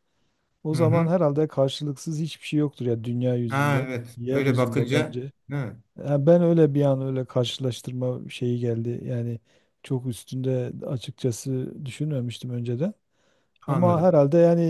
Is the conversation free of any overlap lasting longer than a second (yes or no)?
no